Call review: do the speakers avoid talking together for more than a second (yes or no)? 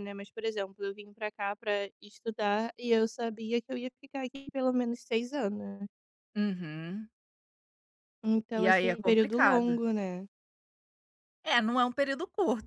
no